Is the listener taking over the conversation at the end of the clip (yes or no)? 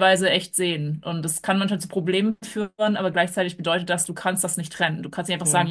no